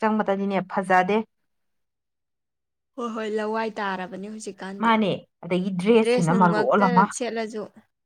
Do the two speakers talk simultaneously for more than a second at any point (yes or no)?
no